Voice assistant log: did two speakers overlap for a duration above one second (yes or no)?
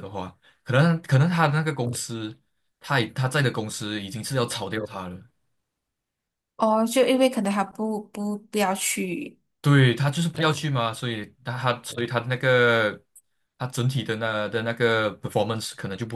no